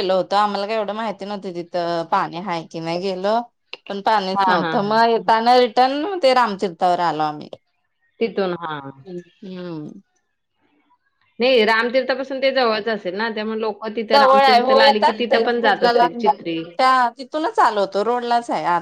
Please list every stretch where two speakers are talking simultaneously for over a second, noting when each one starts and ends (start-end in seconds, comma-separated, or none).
14.1-16.1